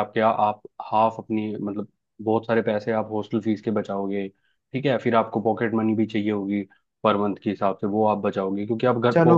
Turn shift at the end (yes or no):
yes